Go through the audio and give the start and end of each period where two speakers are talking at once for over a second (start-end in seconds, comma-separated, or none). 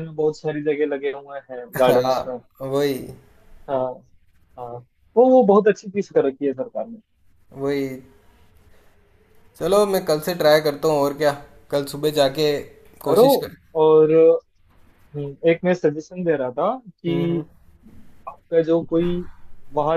none